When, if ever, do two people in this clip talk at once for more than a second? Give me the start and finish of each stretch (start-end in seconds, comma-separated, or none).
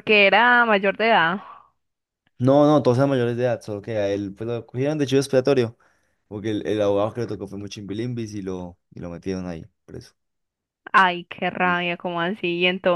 none